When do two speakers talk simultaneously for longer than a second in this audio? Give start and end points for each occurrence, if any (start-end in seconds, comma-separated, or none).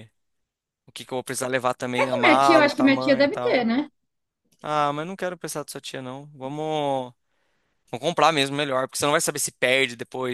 2.0-3.6